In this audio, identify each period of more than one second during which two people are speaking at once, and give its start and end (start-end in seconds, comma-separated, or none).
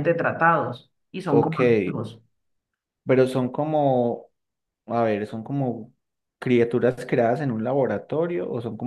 none